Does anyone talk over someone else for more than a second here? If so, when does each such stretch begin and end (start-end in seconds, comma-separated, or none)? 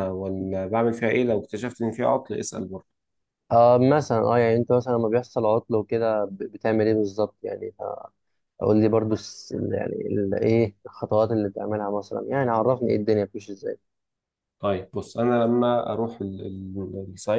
none